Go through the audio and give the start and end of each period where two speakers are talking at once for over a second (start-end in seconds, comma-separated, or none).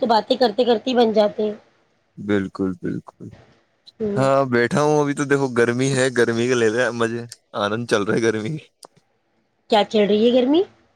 none